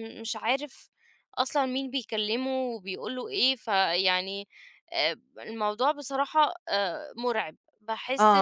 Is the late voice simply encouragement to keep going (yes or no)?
no